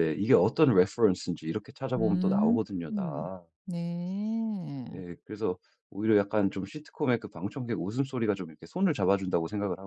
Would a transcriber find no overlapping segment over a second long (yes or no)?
no